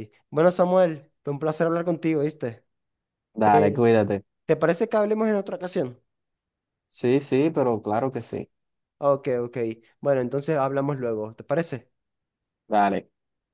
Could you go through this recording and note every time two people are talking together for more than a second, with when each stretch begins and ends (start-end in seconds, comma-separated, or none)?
none